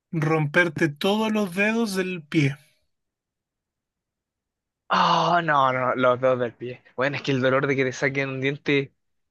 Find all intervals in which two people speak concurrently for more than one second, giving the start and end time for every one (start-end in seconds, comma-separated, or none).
none